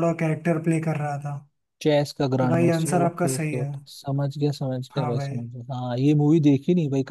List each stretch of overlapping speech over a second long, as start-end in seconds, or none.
2.4-3.7